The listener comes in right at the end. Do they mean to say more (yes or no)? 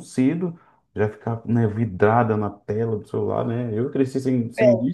no